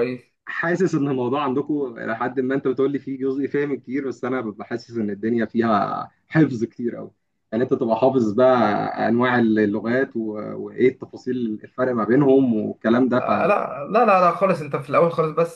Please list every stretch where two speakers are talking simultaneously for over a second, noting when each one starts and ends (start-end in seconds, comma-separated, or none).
none